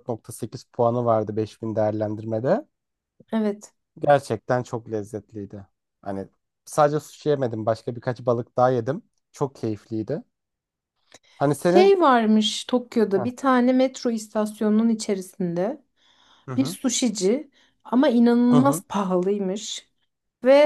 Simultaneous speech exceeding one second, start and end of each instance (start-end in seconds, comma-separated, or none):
none